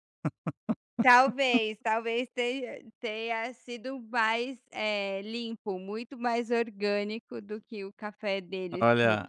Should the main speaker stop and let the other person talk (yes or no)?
yes